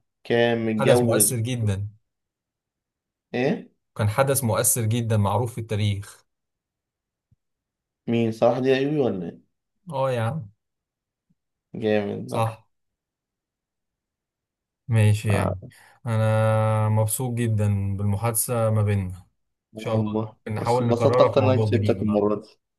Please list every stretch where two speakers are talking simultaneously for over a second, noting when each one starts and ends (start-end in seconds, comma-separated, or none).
19.8-22.2